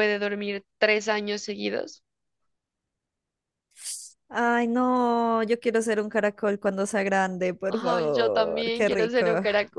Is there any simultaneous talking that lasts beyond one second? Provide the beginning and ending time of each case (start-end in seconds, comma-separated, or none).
7.7-9.3